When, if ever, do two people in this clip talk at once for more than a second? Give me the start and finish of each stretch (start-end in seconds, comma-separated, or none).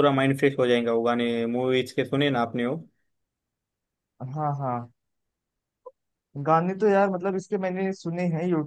none